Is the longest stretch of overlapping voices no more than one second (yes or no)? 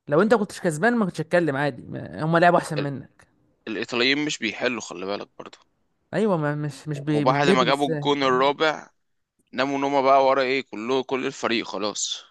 no